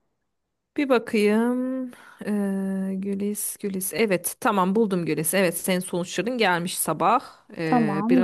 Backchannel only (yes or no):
no